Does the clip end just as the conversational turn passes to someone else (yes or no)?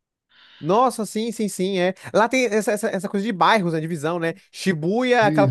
no